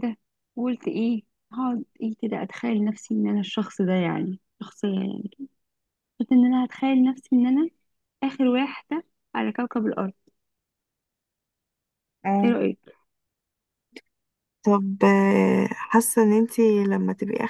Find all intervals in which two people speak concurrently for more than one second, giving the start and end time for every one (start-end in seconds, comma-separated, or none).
none